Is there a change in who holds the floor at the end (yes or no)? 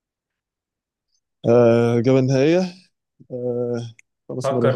yes